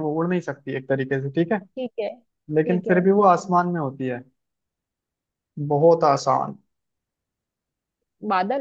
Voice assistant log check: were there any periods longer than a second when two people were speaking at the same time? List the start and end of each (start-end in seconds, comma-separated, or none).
none